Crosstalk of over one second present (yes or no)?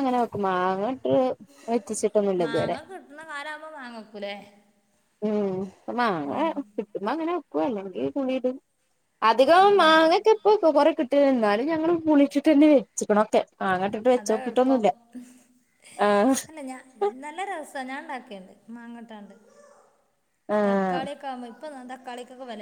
no